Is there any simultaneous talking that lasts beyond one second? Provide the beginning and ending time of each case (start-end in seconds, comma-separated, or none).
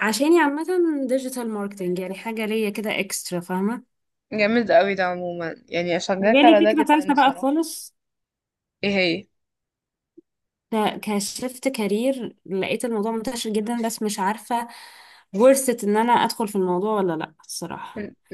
6.2-7.6